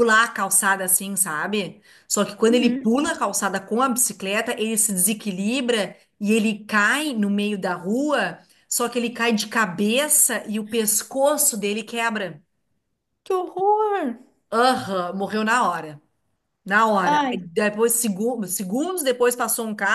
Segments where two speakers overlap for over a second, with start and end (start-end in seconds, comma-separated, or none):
none